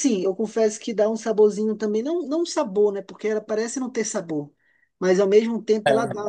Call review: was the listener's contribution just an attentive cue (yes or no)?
yes